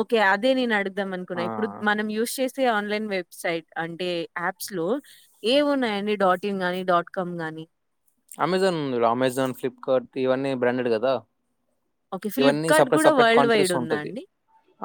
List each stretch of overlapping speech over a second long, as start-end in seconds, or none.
12.4-14.1